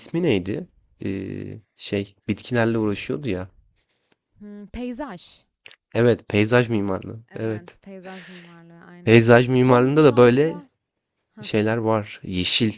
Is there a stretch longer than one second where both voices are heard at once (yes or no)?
yes